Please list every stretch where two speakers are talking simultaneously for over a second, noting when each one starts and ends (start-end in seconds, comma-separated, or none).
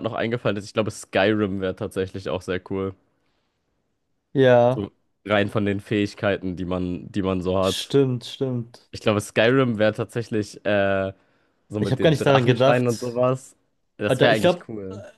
11.8-13.2